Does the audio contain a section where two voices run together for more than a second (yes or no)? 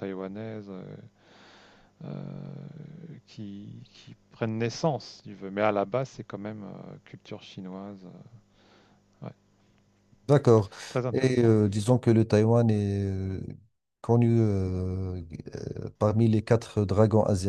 no